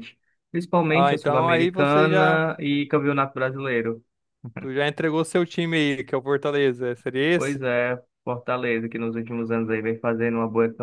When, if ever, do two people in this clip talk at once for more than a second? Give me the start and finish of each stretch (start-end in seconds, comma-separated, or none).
0.9-2.5